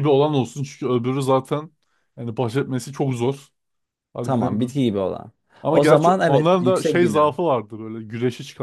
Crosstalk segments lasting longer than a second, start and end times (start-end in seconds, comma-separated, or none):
5.7-7.4